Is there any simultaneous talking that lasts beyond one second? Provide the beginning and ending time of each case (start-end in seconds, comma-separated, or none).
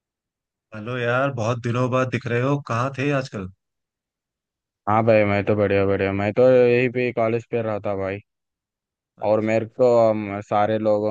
none